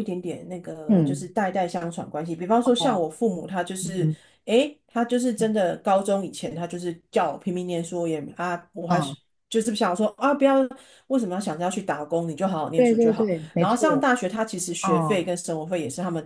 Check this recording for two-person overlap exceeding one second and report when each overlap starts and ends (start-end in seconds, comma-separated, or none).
12.8-14.1